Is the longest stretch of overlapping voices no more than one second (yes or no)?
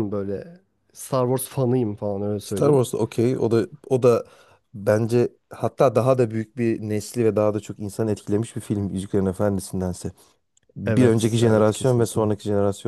no